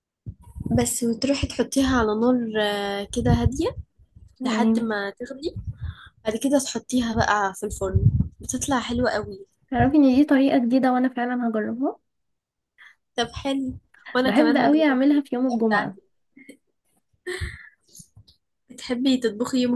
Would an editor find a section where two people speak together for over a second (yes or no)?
yes